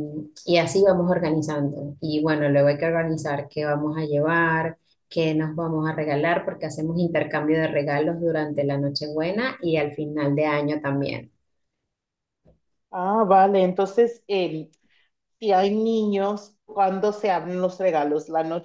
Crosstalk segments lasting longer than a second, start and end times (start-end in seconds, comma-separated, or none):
none